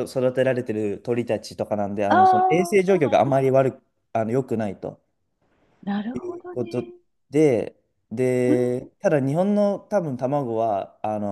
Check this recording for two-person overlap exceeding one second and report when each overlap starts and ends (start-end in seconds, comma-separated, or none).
2.1-3.5